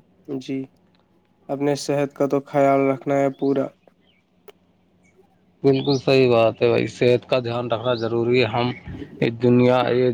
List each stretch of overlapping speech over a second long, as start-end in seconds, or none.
none